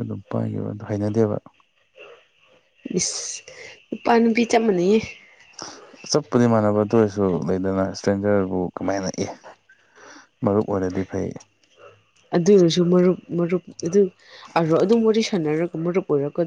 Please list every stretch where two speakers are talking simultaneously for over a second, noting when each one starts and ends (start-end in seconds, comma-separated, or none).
none